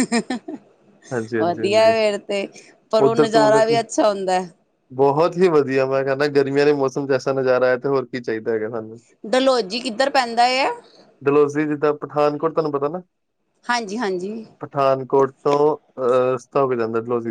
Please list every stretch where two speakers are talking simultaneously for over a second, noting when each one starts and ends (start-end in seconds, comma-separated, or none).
none